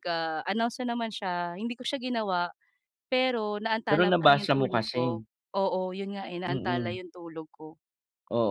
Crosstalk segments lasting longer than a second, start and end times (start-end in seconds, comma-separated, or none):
3.9-5.2